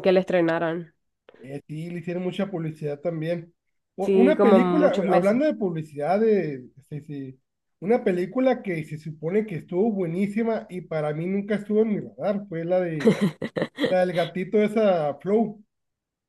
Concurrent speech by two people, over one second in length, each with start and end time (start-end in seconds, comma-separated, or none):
4.0-5.4